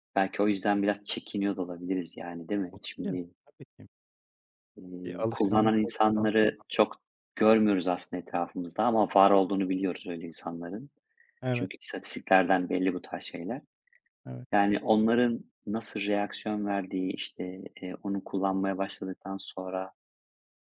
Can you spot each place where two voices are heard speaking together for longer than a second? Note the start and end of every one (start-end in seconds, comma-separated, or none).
5.0-6.6